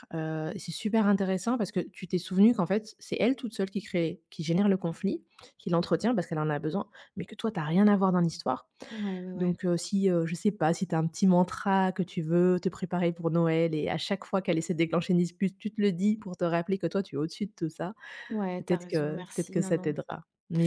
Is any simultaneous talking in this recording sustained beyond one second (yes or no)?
yes